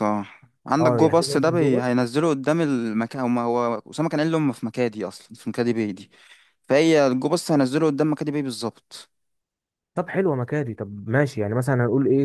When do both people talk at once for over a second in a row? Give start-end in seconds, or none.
0.8-2.0